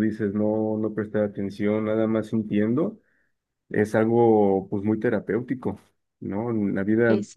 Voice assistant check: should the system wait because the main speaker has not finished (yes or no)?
yes